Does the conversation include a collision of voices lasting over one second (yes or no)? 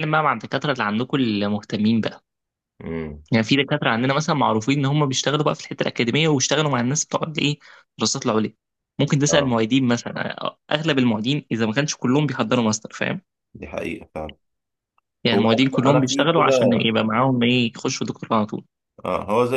yes